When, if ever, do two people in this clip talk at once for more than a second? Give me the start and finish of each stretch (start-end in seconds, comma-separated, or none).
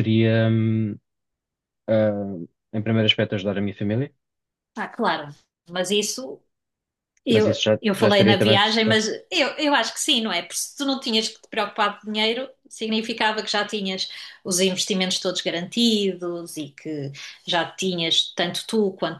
7.3-9.1